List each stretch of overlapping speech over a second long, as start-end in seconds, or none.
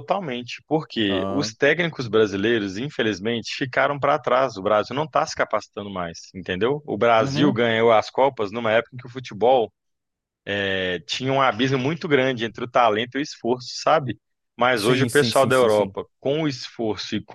14.7-16.0